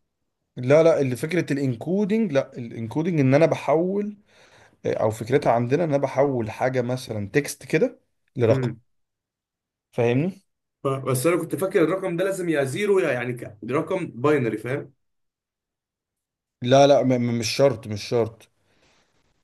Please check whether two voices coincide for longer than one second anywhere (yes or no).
no